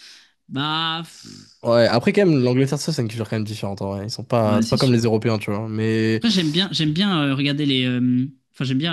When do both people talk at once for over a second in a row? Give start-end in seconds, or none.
none